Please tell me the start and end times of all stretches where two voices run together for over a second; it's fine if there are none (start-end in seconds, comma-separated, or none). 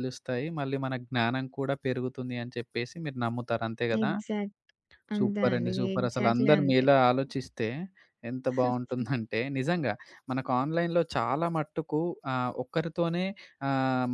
5.2-6.8